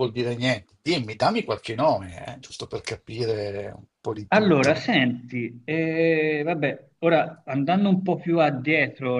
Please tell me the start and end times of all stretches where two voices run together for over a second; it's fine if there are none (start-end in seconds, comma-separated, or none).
none